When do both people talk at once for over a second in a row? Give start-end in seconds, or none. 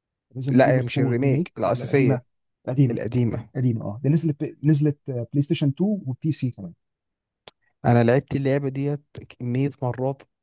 0.5-2.2